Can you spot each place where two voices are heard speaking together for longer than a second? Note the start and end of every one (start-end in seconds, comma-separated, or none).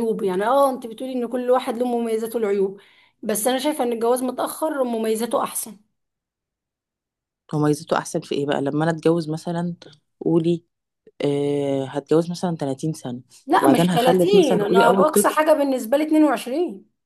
13.6-15.4